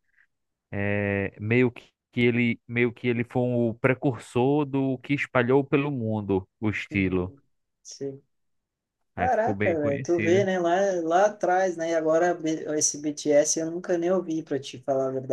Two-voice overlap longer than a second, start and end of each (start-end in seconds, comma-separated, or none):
9.2-10.5